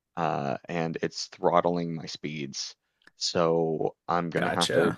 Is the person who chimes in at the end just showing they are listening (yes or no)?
yes